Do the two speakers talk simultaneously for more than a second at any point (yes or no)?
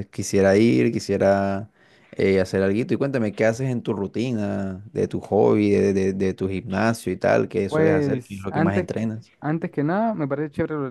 yes